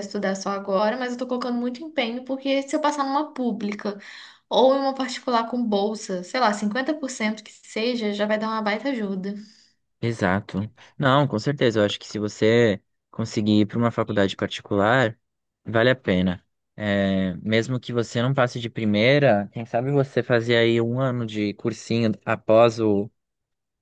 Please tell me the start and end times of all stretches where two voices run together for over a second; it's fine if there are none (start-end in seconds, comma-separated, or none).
none